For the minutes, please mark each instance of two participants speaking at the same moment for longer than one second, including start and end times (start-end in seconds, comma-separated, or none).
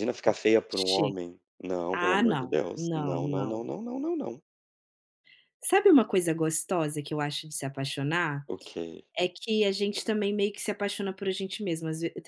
1.9-3.7